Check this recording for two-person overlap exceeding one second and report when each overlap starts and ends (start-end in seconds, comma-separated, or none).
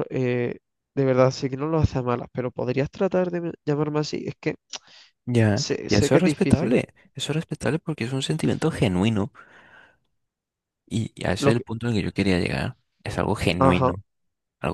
5.5-6.8